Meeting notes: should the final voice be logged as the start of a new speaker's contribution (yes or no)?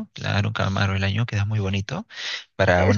yes